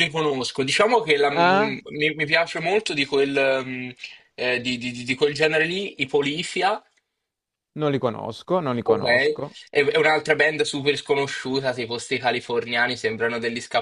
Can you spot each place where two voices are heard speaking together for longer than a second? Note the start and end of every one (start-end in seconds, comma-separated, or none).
none